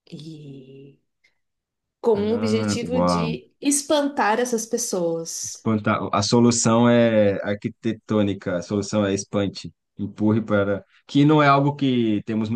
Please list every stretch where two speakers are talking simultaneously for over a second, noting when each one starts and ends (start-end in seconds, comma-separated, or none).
2.1-3.4